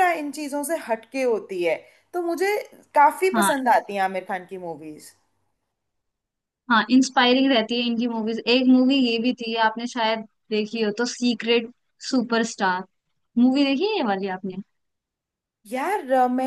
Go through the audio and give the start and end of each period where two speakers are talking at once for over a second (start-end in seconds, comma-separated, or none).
none